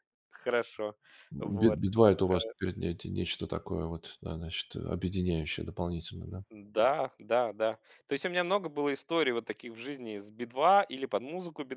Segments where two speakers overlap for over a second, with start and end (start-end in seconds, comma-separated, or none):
none